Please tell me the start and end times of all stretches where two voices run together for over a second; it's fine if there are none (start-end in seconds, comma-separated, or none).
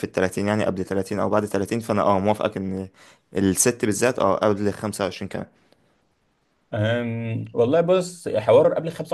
none